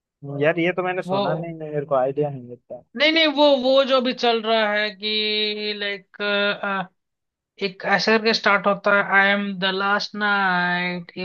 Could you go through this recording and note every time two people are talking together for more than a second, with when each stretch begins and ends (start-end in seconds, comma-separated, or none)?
none